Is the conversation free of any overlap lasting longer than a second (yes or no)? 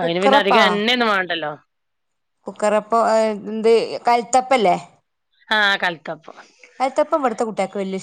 yes